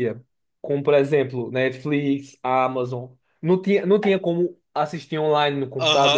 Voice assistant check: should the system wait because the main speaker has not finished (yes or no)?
no